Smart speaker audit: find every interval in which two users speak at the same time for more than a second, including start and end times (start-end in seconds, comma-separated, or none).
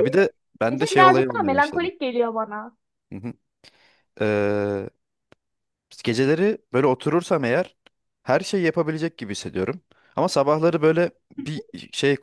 0.7-1.9